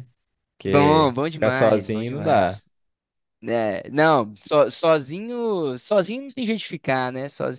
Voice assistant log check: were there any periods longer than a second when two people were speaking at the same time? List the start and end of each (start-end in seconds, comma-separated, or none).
0.6-2.6